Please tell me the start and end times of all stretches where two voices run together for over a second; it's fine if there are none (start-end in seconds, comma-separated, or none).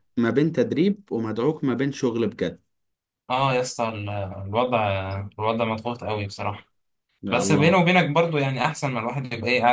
none